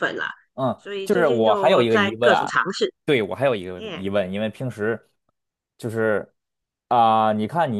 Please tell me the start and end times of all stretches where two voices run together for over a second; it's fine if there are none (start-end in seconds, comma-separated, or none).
0.8-2.5